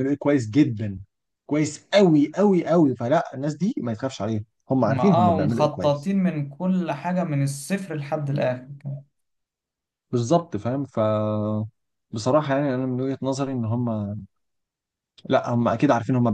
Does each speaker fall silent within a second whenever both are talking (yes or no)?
no